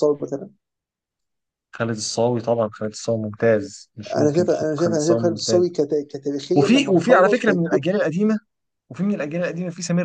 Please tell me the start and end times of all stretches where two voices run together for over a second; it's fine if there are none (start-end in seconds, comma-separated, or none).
4.2-5.6, 6.6-7.8